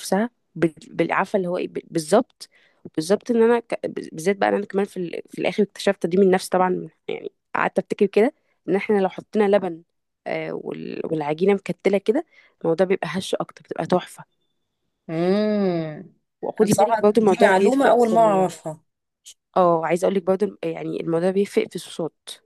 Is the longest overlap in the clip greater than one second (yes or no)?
yes